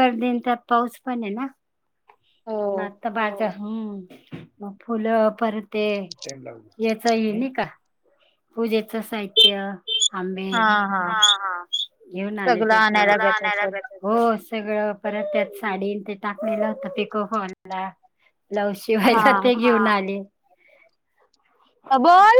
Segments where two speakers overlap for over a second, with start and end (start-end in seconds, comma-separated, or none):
none